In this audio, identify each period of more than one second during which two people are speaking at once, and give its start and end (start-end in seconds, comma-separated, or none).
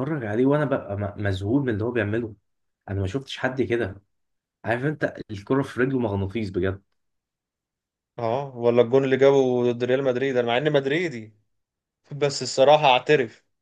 none